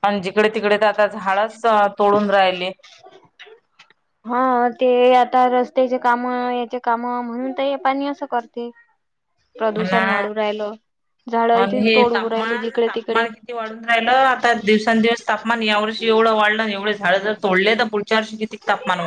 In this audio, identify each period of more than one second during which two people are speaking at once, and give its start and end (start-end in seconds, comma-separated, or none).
11.6-13.3